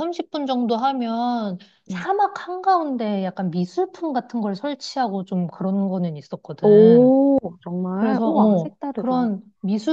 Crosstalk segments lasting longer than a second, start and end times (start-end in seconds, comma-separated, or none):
7.9-9.3